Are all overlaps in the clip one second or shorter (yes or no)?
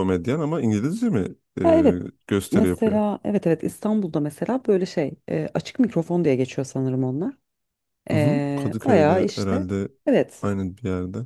no